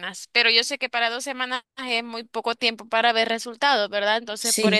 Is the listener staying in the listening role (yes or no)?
yes